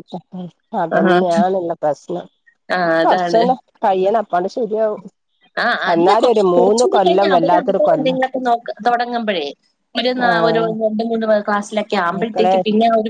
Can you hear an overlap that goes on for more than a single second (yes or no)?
yes